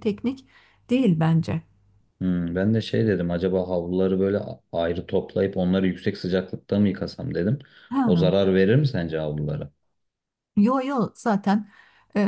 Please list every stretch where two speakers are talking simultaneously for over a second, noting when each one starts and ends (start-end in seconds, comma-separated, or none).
none